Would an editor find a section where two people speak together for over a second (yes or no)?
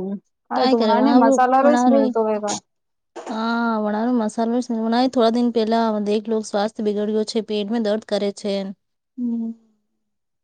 yes